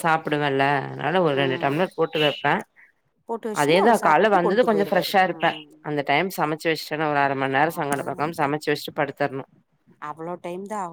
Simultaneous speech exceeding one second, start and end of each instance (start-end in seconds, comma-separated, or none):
3.6-5.5